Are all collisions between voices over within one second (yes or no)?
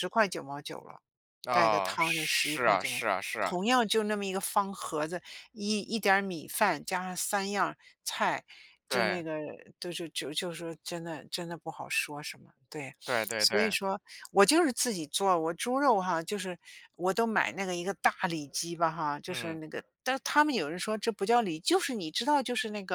no